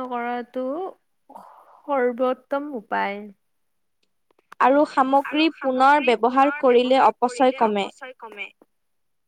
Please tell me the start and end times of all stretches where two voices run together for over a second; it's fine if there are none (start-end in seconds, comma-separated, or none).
5.3-7.9